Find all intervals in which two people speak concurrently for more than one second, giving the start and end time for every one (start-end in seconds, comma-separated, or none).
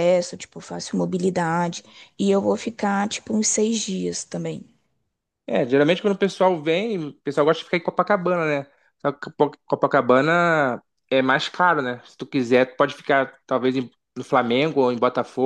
none